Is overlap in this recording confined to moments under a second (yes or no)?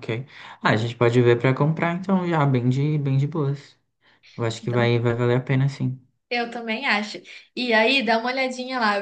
yes